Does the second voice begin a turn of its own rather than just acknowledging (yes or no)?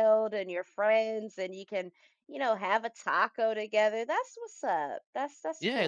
yes